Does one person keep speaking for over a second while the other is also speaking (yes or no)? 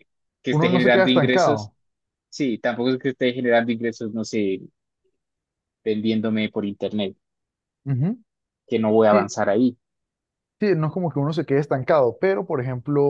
yes